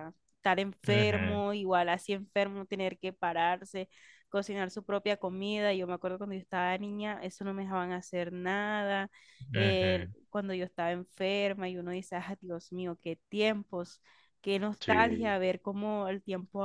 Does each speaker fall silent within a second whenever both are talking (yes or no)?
yes